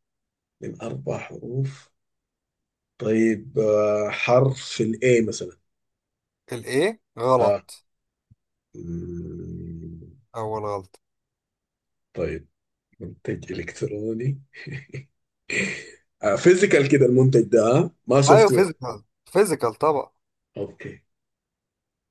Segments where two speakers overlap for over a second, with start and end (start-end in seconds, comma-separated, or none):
none